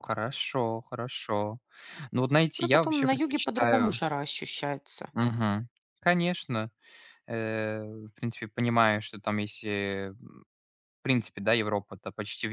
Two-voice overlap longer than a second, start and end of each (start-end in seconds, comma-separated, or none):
2.6-4.0